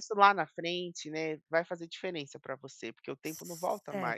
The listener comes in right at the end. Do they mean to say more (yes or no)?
yes